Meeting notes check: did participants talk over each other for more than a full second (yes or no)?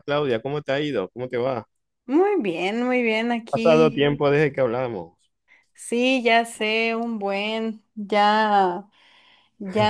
no